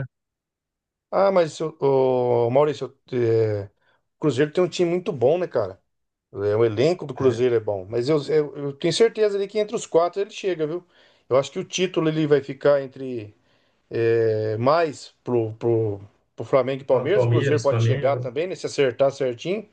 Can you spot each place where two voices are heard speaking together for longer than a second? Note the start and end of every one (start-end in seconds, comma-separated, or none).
16.9-18.3